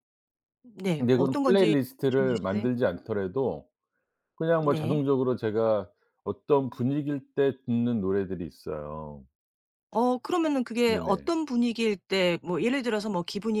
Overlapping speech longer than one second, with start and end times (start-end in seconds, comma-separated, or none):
1.0-2.7